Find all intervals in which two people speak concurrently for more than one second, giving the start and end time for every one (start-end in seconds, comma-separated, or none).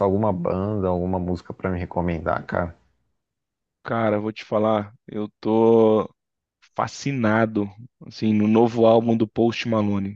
none